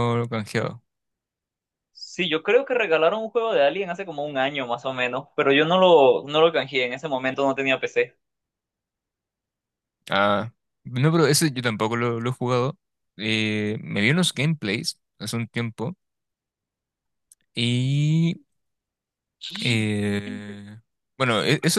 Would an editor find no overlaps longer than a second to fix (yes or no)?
yes